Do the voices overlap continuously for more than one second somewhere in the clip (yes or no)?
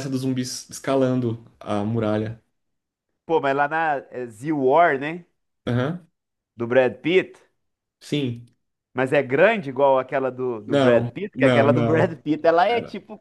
yes